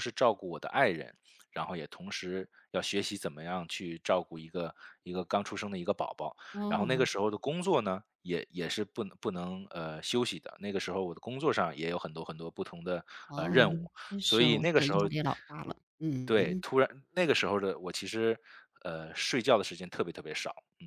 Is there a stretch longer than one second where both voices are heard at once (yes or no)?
yes